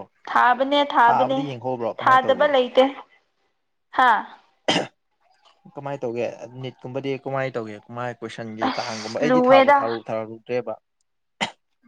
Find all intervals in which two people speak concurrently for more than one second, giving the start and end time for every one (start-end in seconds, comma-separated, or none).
8.6-9.9